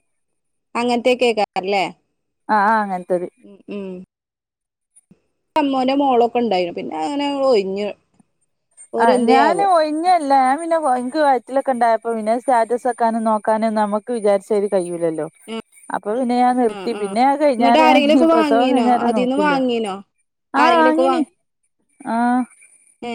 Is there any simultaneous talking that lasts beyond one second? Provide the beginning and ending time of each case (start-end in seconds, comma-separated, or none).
17.6-19.5